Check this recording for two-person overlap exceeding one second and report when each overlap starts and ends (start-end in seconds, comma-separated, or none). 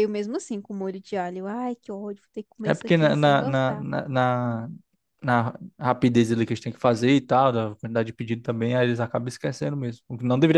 2.6-3.9